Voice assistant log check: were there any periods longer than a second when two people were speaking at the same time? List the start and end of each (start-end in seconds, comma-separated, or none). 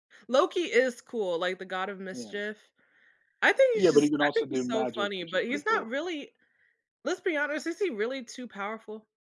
3.7-5.9